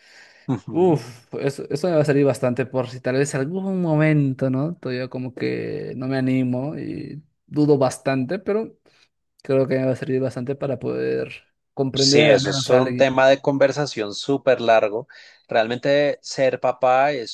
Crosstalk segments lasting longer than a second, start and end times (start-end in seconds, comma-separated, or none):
12.0-13.2